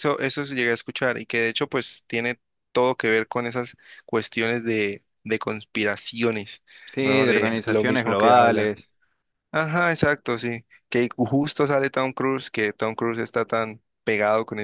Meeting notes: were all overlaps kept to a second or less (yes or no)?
no